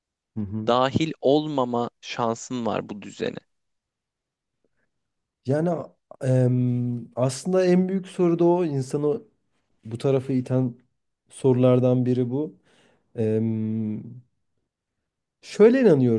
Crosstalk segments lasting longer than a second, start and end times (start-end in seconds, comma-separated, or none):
none